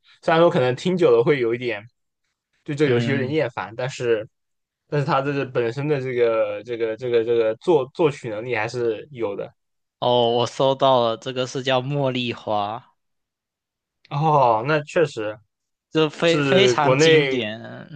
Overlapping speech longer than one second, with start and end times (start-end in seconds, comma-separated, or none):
16.2-17.4